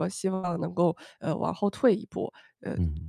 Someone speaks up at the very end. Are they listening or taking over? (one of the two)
taking over